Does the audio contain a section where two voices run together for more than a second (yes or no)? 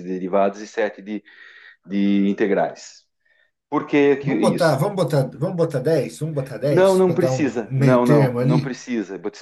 yes